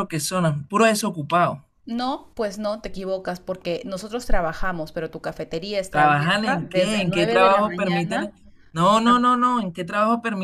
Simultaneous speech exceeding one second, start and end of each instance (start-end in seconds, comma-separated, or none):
5.9-8.3